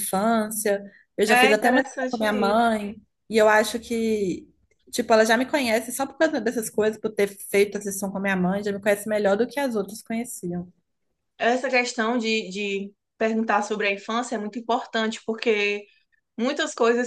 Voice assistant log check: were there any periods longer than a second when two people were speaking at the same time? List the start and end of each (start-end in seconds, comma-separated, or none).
1.3-2.7